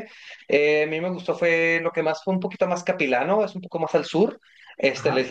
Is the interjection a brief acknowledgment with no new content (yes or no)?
yes